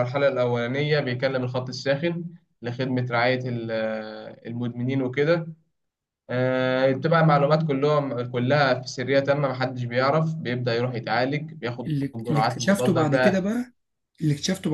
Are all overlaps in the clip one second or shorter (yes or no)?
no